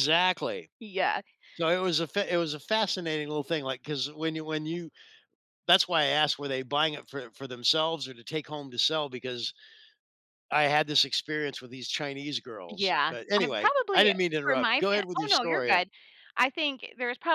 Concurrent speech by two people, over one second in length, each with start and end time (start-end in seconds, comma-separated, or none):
12.7-15.8